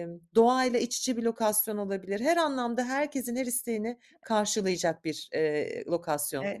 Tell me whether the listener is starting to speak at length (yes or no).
yes